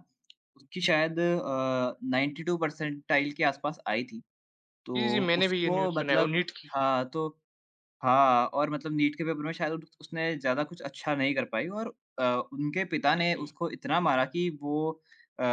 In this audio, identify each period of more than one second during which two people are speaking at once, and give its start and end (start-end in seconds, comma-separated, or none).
5.0-6.8